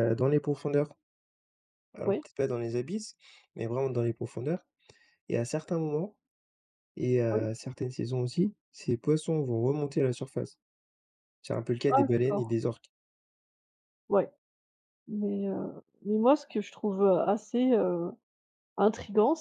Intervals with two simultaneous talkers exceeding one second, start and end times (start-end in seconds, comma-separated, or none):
none